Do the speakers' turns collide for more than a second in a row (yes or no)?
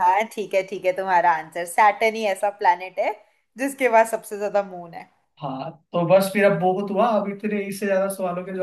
no